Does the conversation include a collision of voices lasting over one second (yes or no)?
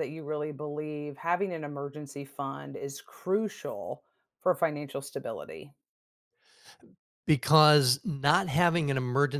no